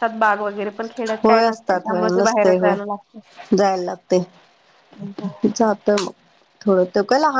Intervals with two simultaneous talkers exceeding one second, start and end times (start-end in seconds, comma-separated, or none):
1.2-2.8